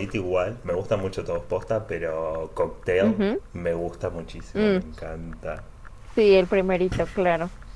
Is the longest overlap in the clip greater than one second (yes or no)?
no